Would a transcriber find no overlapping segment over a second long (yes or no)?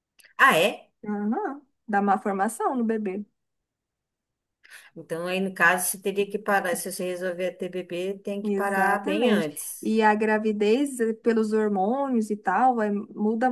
no